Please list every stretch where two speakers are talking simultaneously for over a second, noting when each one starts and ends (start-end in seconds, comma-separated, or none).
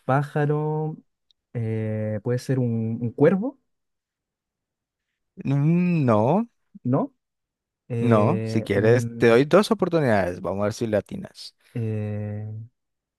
8.0-9.5